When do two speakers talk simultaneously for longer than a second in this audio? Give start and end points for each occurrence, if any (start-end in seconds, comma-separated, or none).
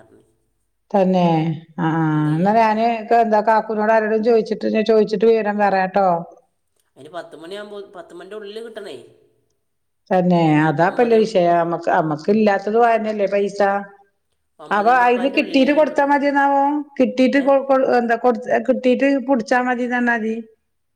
14.8-16.2